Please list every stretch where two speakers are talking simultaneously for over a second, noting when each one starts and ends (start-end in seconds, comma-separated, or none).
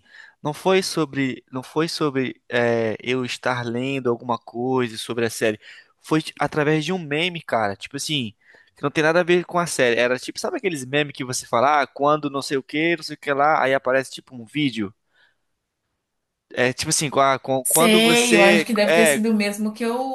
17.6-19.2